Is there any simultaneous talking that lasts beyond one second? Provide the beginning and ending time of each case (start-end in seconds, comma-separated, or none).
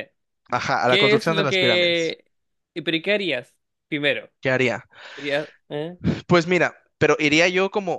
0.8-2.2